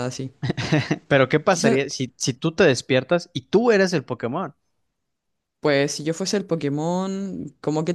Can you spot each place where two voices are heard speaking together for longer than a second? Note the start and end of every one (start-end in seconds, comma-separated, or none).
none